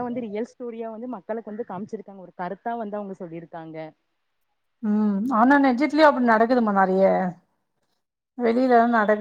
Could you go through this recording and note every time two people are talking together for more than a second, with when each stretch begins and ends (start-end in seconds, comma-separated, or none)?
none